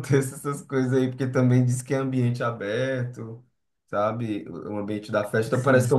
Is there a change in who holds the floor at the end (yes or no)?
no